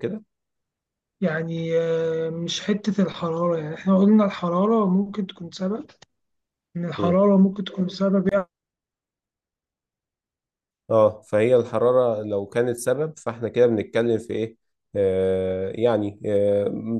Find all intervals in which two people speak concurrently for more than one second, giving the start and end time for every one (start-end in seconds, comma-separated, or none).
none